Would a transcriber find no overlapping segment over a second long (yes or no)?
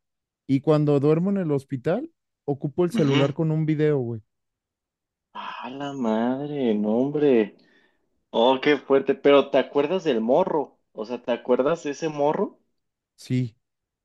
yes